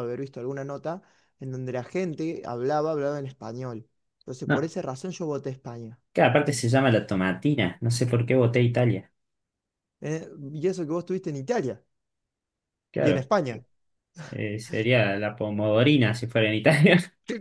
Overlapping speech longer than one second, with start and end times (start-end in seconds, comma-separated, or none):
none